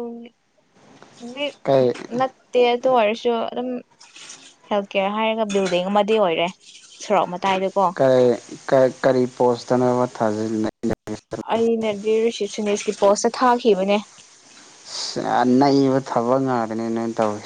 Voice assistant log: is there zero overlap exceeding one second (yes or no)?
yes